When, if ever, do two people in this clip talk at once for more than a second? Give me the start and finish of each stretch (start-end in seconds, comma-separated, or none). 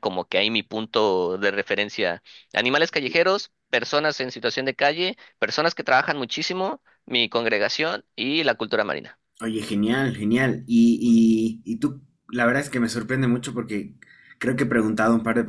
none